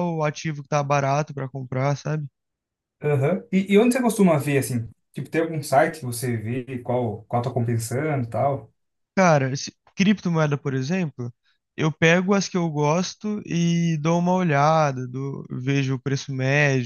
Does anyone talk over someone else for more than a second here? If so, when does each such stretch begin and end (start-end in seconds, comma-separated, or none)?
none